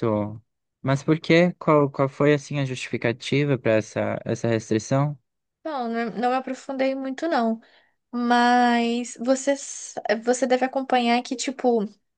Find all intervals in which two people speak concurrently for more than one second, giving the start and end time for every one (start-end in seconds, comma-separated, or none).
none